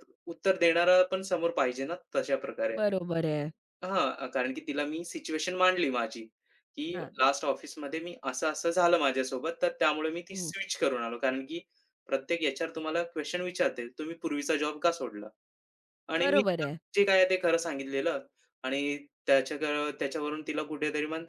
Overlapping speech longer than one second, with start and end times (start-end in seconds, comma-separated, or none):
none